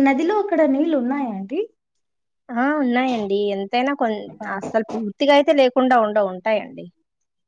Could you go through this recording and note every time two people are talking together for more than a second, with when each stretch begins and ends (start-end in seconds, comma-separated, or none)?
none